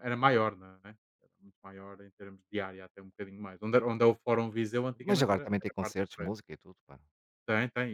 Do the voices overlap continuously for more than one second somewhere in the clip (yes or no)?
yes